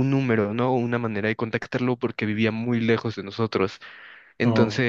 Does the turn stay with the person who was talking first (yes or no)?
yes